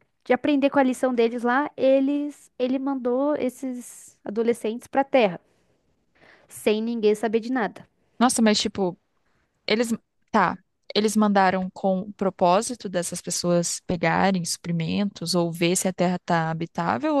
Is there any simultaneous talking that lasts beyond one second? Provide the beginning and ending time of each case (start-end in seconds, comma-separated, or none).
none